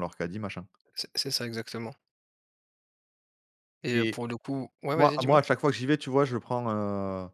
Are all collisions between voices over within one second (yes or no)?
yes